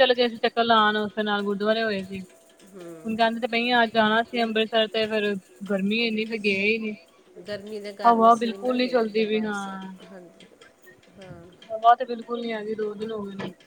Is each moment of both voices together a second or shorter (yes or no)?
no